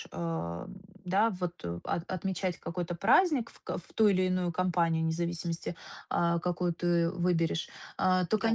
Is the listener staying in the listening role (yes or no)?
yes